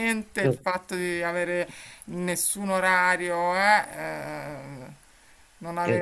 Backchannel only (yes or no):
yes